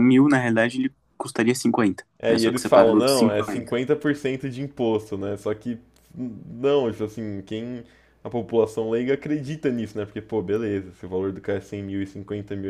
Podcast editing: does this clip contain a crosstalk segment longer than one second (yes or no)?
yes